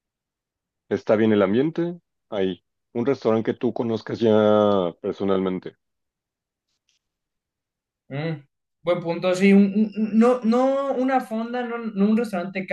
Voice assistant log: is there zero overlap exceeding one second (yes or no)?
yes